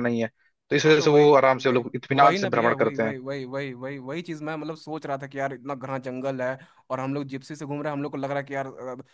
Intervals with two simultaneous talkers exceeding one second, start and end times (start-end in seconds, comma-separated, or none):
0.8-3.1